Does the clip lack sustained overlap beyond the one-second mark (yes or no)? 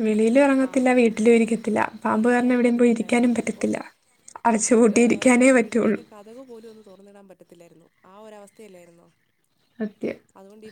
no